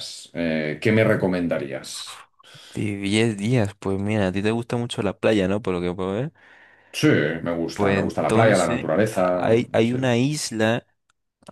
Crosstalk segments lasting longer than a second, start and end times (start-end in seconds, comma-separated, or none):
7.7-10.0